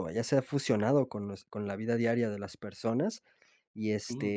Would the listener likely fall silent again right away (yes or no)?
yes